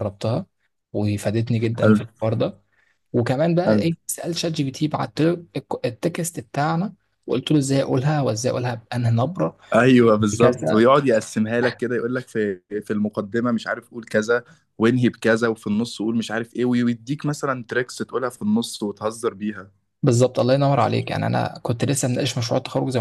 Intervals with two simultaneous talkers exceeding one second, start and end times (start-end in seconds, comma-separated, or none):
none